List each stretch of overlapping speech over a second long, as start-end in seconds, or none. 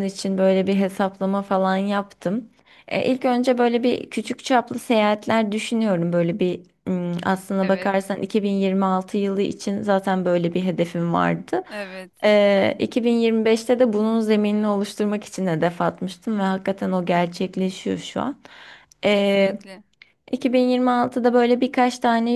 none